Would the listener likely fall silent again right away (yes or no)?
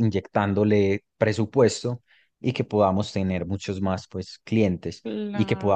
yes